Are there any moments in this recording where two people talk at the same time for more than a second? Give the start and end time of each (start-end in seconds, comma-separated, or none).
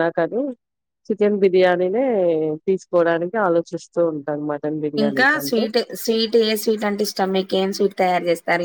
none